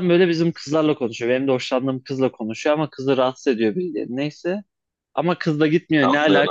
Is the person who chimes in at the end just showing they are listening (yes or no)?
yes